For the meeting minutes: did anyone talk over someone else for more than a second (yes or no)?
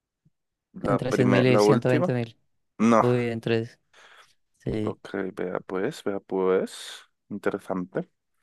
yes